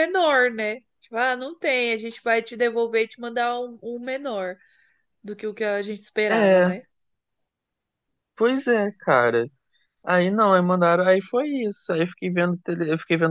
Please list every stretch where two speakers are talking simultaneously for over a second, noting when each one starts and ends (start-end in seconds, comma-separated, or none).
none